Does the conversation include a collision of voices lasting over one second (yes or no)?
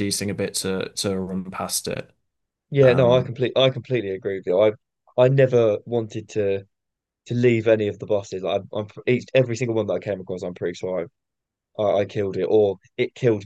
no